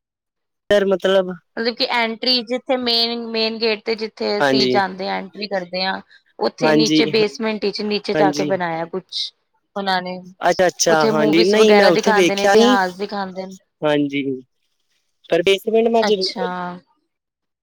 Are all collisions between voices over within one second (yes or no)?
no